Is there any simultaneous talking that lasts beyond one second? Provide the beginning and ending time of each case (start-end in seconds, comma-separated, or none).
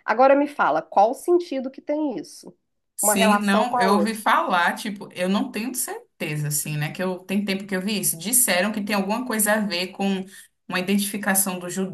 3.0-4.2